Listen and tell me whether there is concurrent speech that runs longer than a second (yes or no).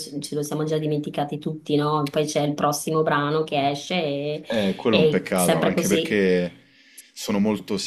yes